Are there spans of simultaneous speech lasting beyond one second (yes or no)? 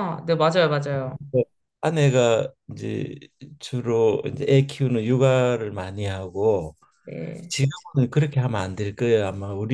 no